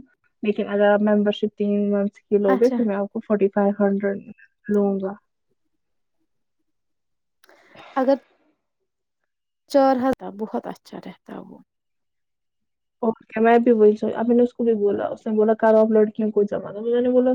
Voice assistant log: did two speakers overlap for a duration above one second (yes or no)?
no